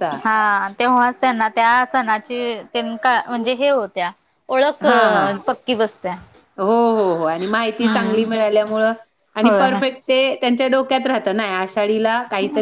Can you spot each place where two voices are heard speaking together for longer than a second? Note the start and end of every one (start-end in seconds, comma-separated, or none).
none